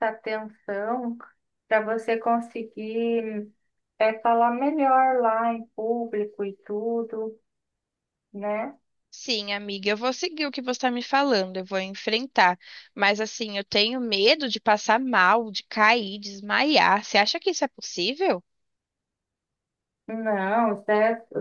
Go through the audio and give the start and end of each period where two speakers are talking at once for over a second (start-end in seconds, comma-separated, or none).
none